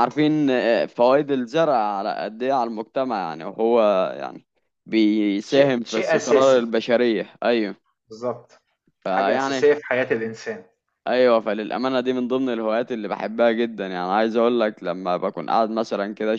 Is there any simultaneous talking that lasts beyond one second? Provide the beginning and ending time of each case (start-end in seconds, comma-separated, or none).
5.5-6.7